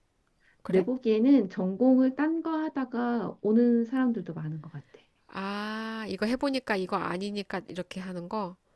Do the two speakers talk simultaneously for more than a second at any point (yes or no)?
no